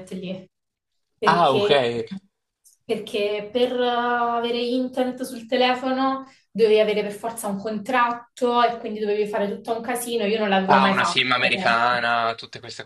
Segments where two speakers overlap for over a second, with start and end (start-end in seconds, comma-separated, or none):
10.8-12.1